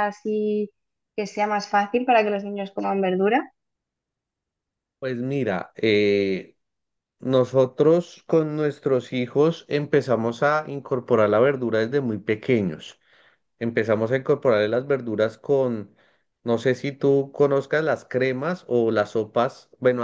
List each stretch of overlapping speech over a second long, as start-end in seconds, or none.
none